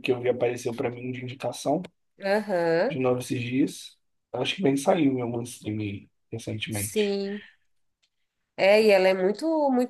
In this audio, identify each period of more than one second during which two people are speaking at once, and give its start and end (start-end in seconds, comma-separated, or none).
none